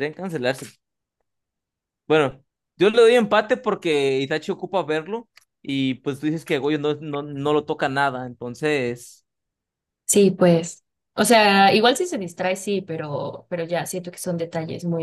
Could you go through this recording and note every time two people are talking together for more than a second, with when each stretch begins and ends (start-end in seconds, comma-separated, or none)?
none